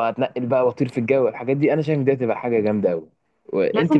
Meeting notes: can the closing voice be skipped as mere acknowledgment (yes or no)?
no